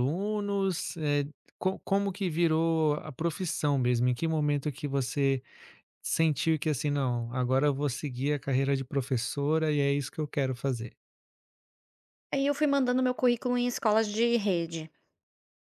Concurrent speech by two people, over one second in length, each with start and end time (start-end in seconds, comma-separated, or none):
none